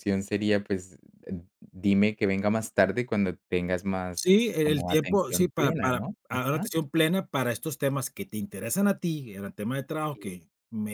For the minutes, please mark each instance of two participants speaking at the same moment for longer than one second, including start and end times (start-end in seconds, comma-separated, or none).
4.2-6.7